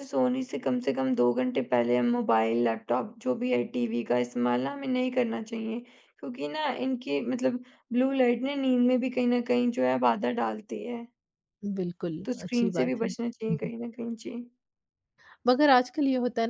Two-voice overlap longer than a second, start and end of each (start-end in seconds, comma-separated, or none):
12.2-13.7